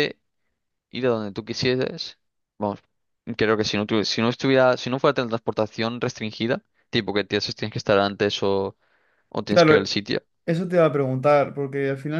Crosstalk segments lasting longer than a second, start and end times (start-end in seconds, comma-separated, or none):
none